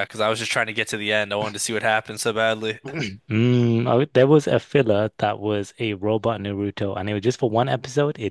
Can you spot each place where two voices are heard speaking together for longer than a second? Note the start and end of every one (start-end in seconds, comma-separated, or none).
none